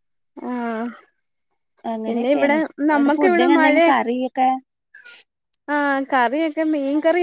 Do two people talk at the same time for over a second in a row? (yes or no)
yes